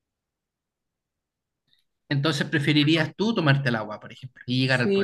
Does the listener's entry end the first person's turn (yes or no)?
yes